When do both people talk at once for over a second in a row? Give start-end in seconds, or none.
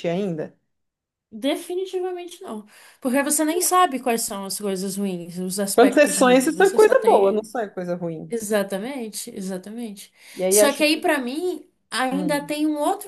5.7-7.5